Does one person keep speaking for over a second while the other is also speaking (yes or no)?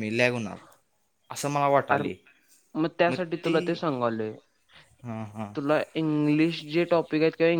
no